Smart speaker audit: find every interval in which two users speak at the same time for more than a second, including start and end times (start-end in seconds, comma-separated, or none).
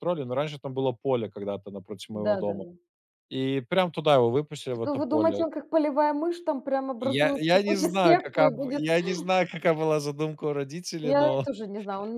7.0-8.8